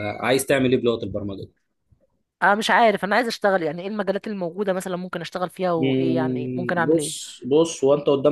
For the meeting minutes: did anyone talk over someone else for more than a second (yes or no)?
yes